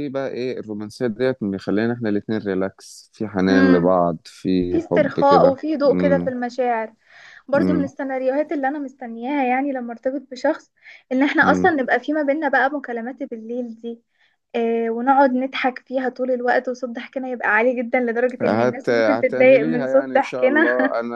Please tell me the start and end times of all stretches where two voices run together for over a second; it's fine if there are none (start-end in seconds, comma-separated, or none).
4.7-6.3, 18.4-20.6